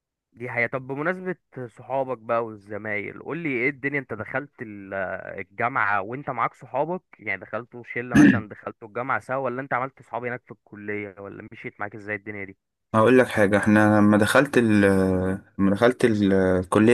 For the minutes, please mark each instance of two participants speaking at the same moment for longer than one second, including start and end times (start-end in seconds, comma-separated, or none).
none